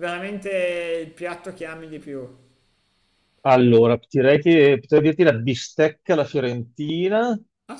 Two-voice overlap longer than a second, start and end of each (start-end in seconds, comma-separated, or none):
none